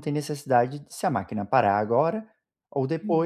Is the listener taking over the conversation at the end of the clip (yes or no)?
no